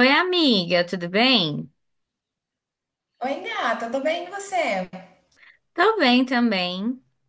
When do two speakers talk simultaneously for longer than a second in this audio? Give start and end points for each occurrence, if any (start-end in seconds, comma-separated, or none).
none